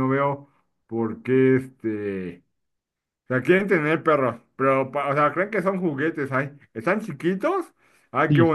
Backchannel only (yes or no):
yes